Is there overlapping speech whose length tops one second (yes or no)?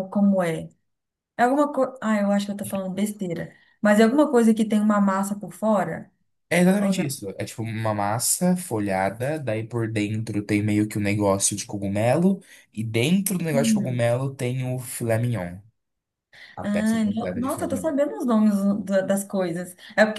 yes